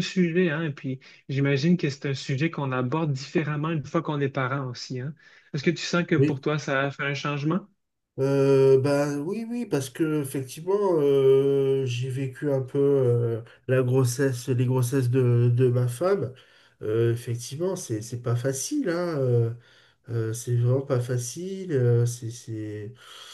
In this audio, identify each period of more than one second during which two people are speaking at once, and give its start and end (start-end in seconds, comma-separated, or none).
none